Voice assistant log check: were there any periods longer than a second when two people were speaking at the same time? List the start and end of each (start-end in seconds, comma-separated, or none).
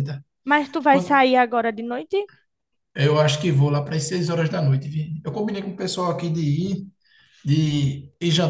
none